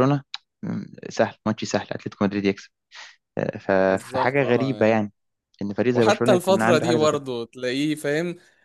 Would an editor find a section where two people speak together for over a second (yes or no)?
yes